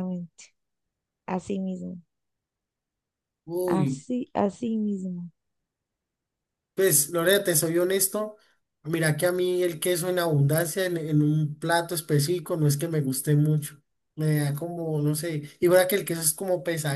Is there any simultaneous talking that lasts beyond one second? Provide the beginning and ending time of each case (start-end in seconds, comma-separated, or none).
none